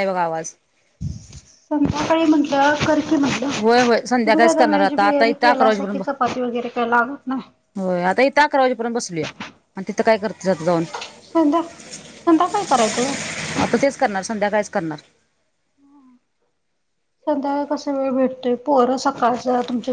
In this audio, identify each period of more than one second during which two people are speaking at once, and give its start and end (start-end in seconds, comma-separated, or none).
4.2-6.0